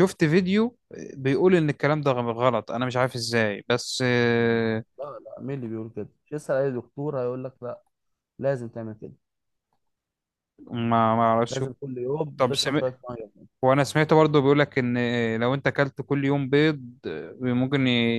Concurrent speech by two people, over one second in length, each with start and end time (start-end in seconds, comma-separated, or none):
none